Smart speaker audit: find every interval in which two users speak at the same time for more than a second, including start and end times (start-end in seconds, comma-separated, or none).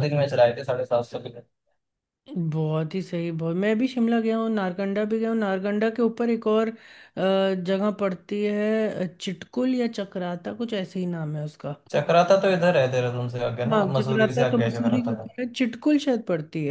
13.7-15.3